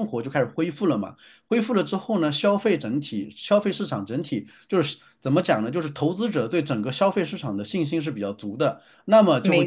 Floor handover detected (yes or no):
no